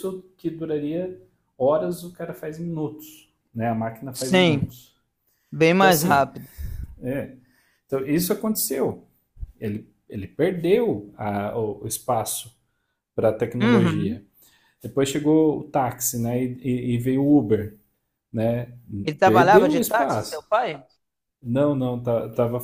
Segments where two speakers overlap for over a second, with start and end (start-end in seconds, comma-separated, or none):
19.2-20.5